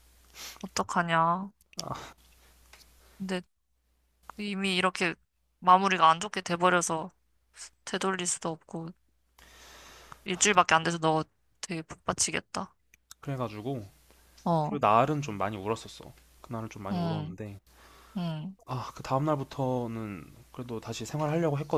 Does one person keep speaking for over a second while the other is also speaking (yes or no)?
no